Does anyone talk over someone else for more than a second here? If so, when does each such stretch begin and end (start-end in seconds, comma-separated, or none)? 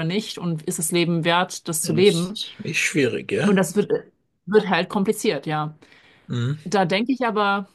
none